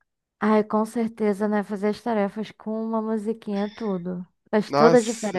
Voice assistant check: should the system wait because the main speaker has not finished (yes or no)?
no